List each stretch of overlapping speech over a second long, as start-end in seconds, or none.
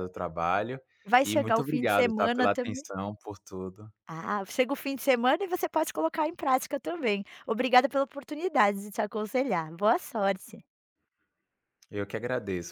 1.2-2.8